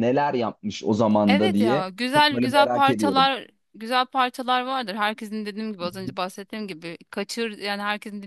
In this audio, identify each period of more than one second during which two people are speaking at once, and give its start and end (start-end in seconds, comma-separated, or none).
1.3-3.3